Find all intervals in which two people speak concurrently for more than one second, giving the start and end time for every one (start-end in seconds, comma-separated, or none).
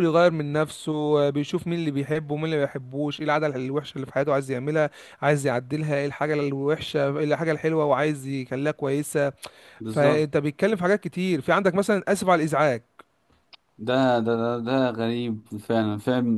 none